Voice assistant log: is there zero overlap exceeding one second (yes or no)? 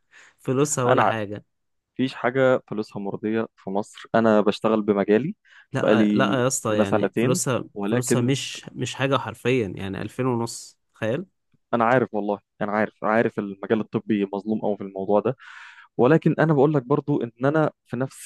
no